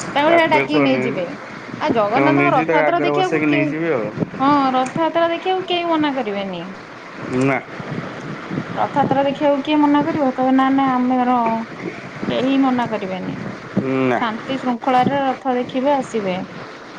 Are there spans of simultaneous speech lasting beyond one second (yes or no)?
yes